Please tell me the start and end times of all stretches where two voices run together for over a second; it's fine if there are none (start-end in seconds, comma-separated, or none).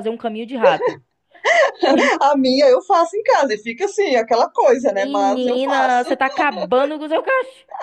4.9-6.2